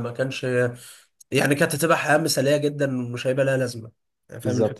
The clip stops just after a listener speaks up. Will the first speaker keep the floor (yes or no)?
no